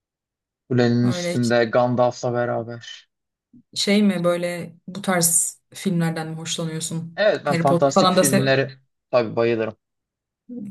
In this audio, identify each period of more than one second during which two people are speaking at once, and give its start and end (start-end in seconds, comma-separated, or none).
7.2-8.5